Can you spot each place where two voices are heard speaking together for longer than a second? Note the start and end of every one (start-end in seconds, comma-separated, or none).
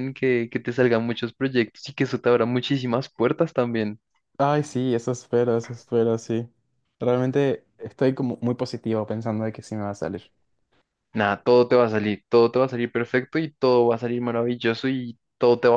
none